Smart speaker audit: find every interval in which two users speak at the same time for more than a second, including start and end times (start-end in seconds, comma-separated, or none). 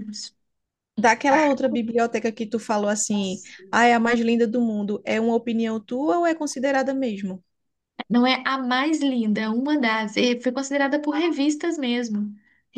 none